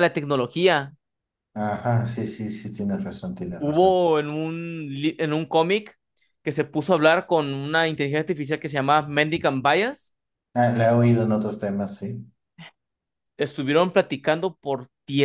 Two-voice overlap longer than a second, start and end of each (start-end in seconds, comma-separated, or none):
none